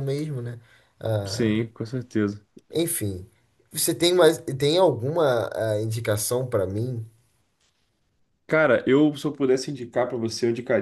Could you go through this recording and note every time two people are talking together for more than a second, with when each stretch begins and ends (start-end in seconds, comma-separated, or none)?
none